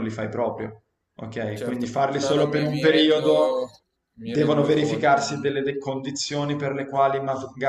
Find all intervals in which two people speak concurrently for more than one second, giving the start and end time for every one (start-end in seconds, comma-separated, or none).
1.5-3.5, 4.2-5.6